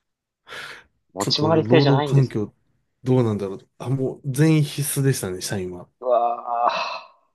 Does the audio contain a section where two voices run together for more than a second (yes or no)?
yes